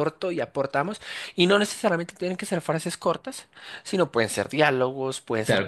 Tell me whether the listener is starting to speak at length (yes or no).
yes